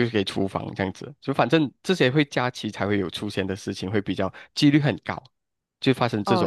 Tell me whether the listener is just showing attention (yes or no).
no